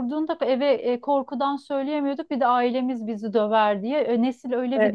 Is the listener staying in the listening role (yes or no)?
yes